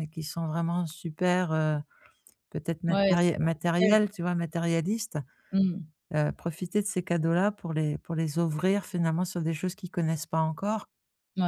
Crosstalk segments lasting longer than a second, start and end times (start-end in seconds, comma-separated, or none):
2.9-4.2